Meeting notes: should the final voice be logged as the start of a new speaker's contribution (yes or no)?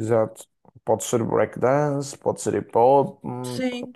yes